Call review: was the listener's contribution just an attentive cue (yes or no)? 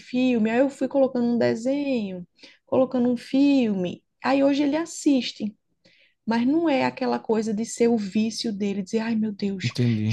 yes